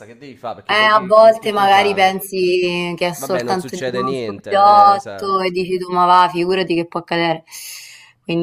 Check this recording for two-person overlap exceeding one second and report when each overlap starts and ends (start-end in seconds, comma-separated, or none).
0.7-2.1, 3.1-5.4